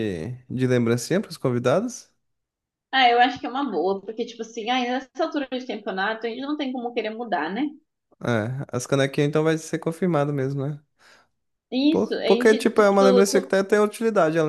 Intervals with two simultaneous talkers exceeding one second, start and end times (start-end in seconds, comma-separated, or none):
11.9-13.5